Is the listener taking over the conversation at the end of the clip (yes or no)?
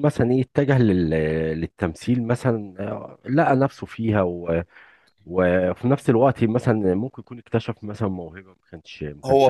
yes